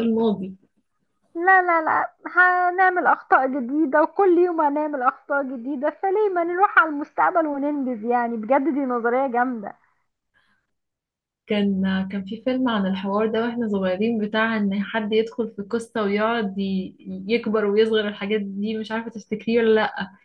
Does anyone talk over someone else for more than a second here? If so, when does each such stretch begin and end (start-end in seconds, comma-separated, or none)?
none